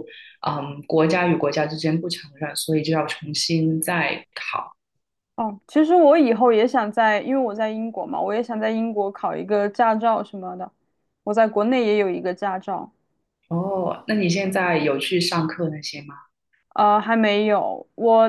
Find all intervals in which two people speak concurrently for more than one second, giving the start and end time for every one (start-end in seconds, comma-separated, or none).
none